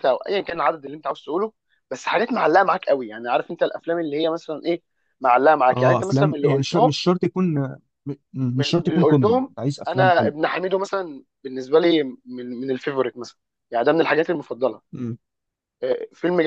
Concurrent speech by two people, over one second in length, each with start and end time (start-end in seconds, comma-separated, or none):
5.7-7.0, 8.5-10.4